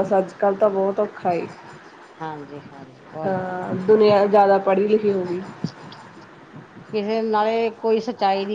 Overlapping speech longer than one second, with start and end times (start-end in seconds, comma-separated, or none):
none